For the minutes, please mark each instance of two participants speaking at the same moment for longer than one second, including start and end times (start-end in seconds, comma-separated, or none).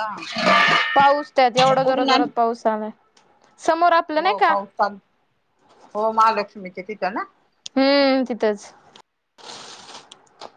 none